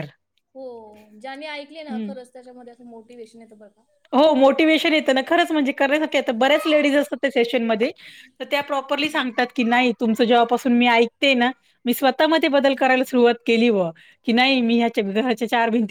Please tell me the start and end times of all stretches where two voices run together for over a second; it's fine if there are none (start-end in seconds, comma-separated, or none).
none